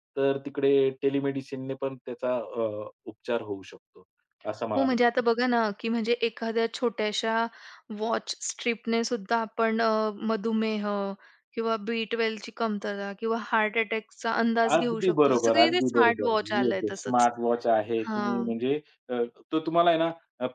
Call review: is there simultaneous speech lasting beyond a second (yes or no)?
yes